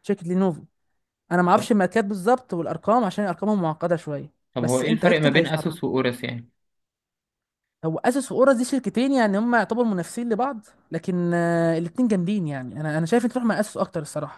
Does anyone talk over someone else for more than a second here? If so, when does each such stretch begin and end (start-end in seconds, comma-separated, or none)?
4.5-5.8